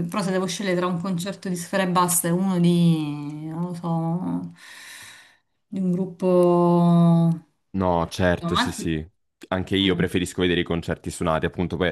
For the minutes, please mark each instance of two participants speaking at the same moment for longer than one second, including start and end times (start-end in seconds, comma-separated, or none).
none